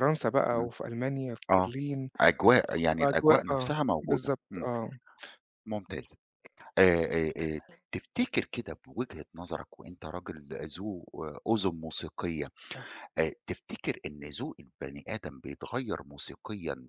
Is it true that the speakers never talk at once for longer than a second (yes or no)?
no